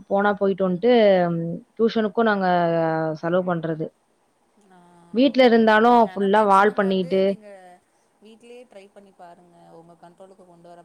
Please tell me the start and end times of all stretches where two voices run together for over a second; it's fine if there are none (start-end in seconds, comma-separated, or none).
5.4-7.2